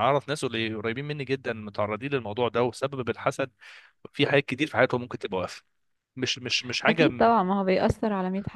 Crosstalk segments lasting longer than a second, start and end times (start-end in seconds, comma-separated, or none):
none